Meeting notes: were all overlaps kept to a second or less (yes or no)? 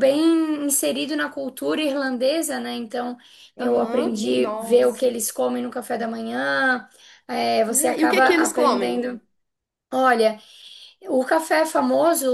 no